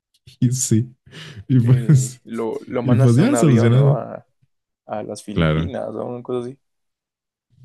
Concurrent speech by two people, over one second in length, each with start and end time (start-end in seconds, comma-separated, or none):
2.8-4.0